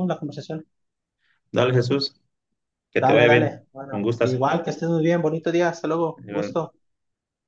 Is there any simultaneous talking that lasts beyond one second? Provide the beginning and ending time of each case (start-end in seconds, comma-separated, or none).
3.0-4.4